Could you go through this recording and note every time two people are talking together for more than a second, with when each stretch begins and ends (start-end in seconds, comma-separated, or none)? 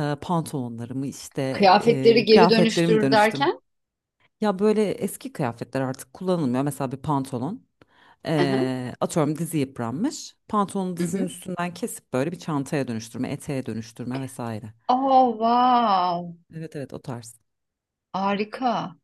1.8-3.5